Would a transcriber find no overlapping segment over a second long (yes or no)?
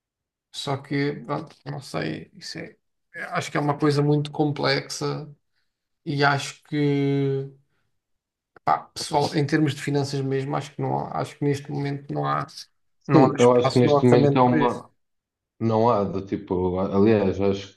no